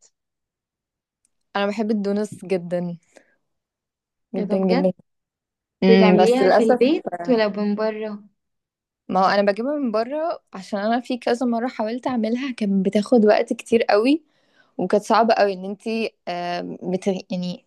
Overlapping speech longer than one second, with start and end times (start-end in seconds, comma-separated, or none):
5.9-7.4